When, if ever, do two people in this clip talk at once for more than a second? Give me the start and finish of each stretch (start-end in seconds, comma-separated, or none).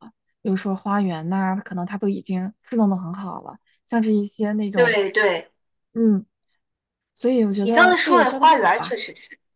7.6-8.9